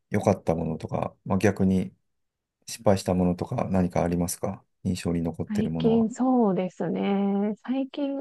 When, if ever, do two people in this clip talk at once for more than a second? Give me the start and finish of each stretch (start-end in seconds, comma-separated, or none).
none